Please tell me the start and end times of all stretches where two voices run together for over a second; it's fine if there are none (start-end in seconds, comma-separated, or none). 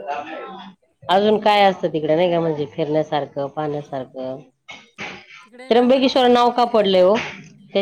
5.7-7.1